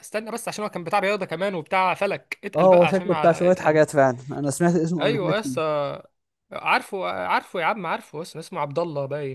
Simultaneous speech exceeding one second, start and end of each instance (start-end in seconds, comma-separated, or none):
2.6-3.8